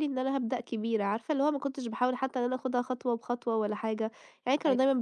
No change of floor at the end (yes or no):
yes